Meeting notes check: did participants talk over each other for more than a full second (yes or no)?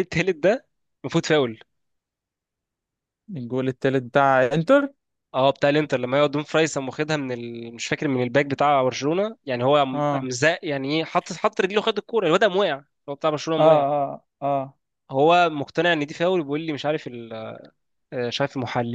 no